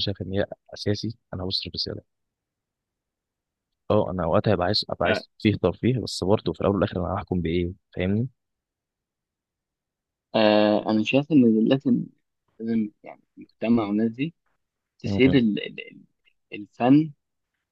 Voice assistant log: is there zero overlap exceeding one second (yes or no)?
yes